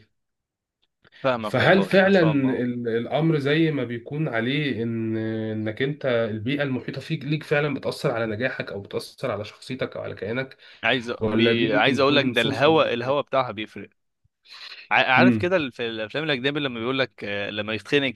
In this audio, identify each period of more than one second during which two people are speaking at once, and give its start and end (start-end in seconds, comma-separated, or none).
1.4-2.6, 11.2-12.8